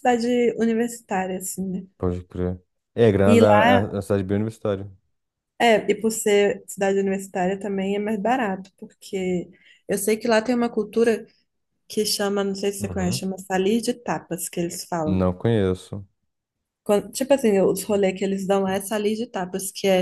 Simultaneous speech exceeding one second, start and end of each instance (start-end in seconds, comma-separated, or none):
none